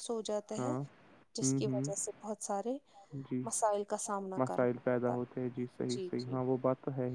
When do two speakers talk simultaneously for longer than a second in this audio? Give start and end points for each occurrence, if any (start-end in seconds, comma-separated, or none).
4.4-6.6